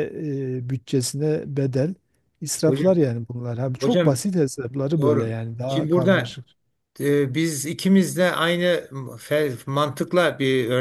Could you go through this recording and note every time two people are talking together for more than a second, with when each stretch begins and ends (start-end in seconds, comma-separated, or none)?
5.0-6.4